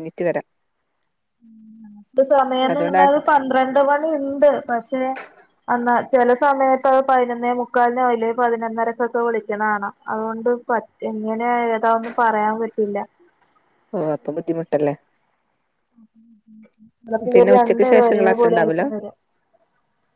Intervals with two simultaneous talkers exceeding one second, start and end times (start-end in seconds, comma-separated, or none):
17.3-18.8